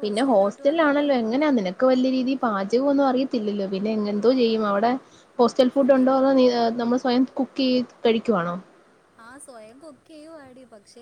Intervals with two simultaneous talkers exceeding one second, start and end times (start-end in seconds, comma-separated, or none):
none